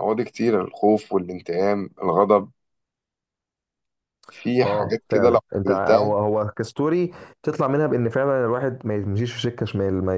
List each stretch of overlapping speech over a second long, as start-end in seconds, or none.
4.6-6.1